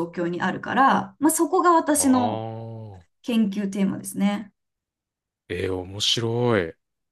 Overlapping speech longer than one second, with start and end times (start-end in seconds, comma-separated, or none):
none